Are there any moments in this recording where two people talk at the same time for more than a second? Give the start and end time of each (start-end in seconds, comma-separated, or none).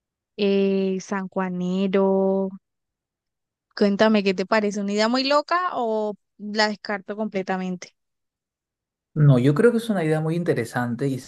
none